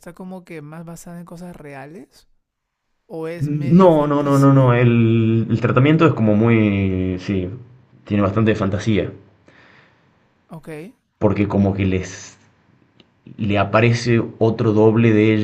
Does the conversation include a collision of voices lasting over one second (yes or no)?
yes